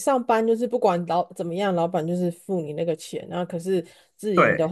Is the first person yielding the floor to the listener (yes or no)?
no